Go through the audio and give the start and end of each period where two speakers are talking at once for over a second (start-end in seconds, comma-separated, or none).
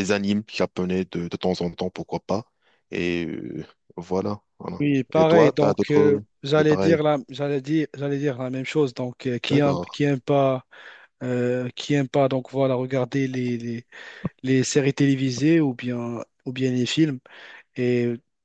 4.8-7.0